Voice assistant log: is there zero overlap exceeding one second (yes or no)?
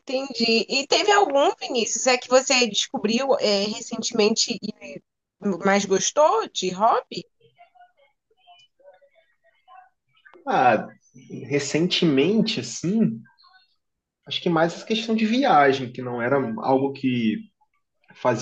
yes